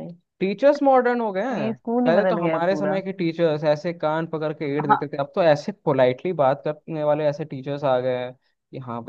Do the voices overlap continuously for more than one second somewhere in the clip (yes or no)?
yes